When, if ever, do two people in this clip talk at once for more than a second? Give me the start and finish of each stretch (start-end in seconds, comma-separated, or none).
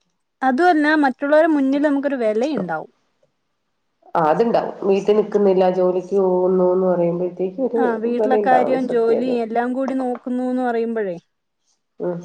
none